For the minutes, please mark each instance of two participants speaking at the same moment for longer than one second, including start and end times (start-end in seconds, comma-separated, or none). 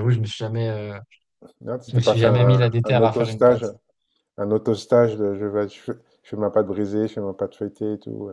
1.9-3.6